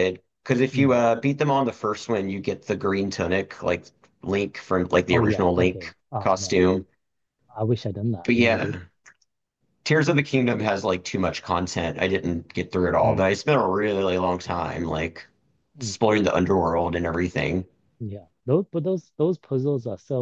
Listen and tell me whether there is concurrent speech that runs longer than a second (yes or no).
yes